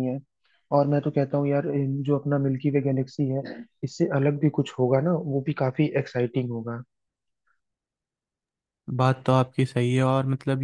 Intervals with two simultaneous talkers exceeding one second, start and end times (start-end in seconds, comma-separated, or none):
none